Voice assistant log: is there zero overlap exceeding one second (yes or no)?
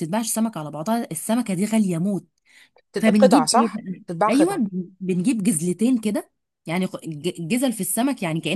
no